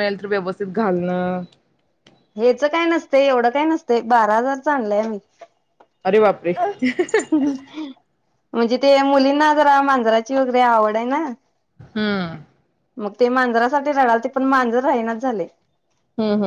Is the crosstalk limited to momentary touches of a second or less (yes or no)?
yes